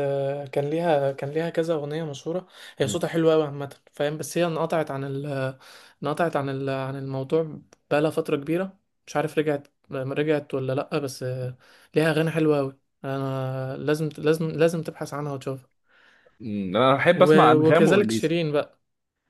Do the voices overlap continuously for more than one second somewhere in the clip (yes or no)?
yes